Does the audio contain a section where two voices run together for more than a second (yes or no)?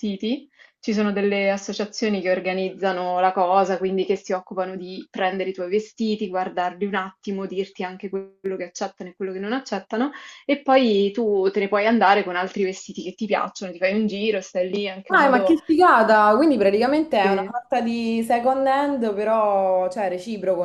no